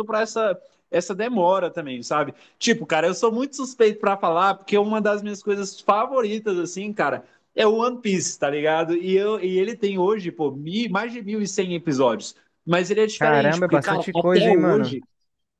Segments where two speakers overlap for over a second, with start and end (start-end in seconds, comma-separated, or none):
13.1-15.0